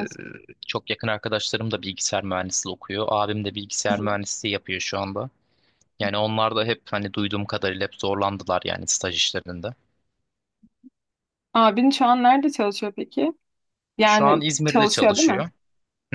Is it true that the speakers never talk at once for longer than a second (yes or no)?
no